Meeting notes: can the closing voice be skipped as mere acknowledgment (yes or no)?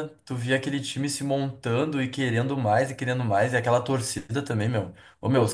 yes